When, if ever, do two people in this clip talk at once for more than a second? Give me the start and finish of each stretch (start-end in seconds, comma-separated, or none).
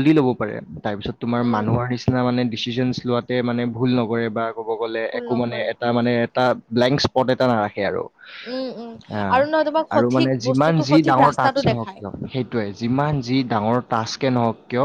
9.9-12.0